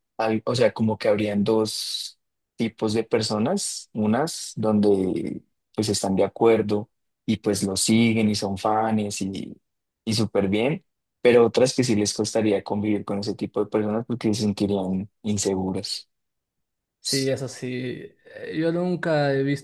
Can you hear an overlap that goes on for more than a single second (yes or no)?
no